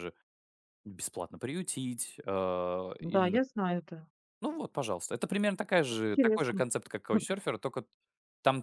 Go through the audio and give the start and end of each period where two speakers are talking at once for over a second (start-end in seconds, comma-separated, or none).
none